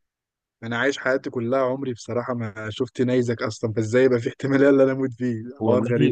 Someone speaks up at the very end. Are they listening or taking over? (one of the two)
taking over